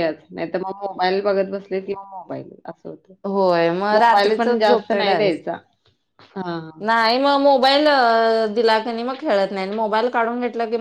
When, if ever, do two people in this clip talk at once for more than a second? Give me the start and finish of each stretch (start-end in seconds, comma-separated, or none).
3.9-5.4